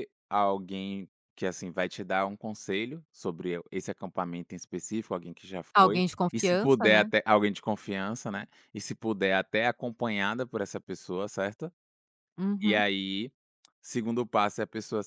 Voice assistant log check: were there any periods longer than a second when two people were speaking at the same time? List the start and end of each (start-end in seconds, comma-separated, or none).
5.7-7.1